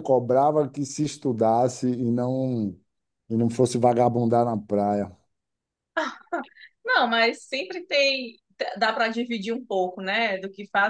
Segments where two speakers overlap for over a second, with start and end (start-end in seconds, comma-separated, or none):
none